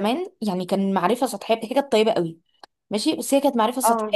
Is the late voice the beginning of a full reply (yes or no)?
no